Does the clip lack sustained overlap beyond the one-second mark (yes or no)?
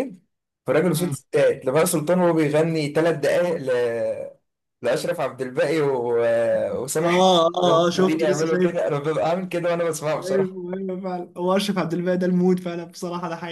no